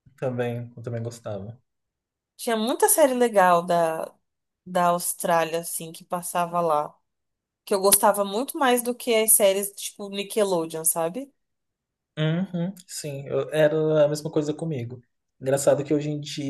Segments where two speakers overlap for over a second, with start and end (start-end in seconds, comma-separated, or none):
none